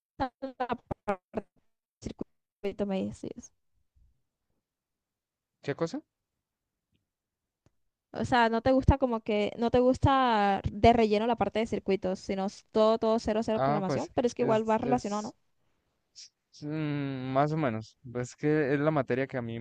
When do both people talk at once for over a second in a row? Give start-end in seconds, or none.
13.5-15.3